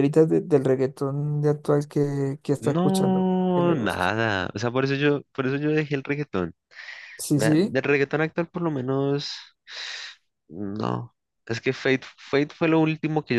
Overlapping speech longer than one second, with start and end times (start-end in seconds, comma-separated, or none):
2.6-4.1